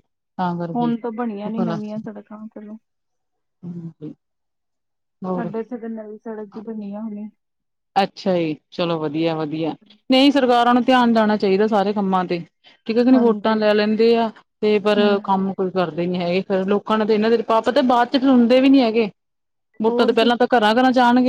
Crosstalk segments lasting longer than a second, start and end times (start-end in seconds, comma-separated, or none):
none